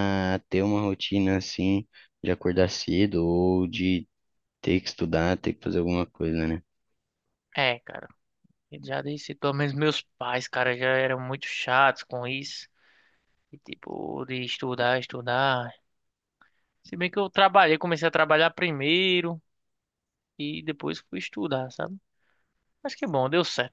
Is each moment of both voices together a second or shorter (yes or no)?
yes